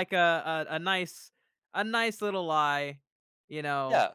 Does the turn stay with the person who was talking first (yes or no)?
no